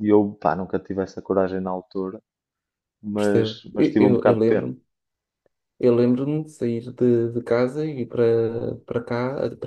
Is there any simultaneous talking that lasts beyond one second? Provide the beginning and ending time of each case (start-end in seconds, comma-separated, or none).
3.1-4.7